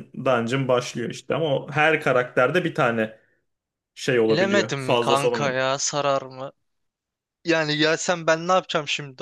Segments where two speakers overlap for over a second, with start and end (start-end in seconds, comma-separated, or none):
4.3-5.5